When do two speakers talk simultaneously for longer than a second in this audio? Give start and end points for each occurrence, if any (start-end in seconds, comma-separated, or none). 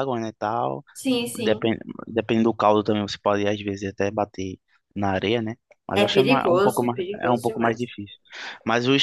5.9-7.9